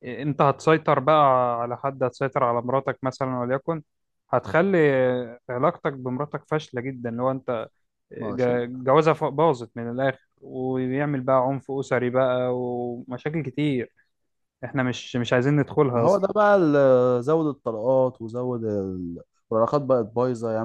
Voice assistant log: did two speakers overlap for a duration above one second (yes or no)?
no